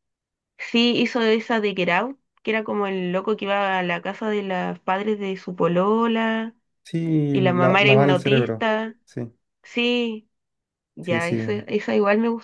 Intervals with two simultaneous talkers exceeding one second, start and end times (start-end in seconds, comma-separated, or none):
7.3-8.9